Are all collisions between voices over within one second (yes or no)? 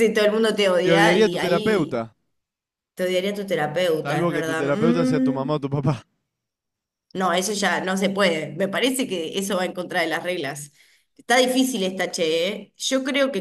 no